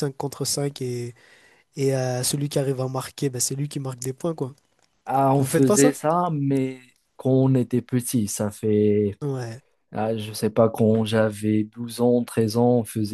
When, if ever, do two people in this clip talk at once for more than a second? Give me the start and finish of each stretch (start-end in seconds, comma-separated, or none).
none